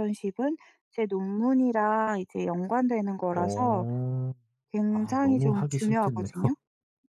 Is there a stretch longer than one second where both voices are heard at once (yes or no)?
yes